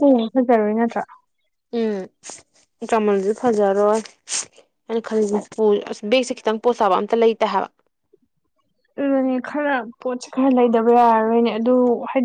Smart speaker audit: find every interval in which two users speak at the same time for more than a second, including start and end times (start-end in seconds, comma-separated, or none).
none